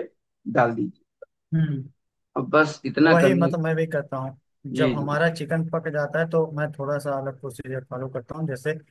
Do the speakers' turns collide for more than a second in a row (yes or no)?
no